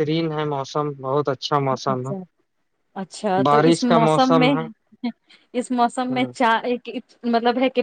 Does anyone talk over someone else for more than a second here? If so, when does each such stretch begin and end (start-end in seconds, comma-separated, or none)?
none